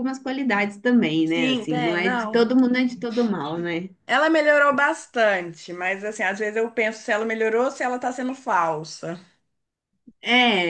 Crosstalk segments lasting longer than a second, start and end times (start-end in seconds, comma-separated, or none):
1.2-2.5